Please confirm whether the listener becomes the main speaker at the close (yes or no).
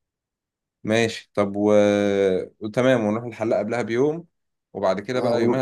no